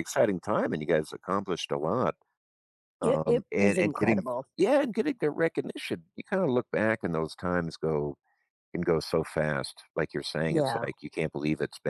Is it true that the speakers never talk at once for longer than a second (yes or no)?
no